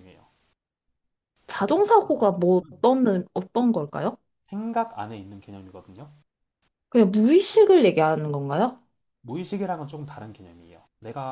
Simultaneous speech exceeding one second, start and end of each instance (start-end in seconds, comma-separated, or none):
1.5-2.8